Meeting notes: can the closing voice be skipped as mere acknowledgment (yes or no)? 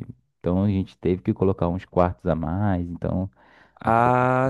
no